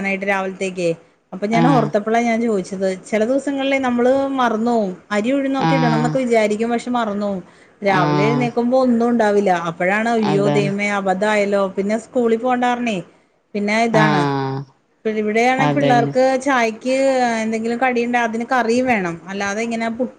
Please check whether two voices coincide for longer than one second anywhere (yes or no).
no